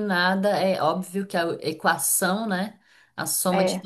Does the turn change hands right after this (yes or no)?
no